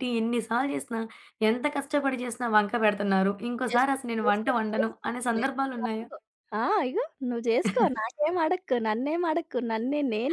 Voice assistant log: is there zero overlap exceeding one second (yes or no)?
no